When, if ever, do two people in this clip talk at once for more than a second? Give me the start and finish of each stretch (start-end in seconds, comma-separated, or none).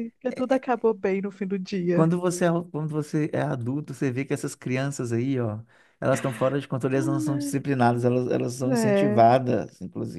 none